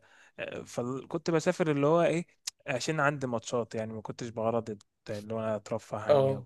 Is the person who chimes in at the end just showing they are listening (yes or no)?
no